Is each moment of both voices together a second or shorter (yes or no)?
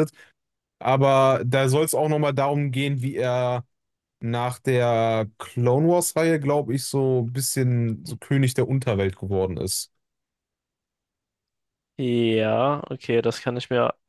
yes